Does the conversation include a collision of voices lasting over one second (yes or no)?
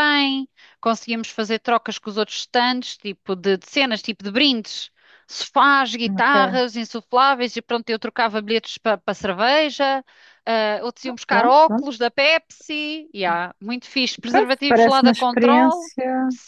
yes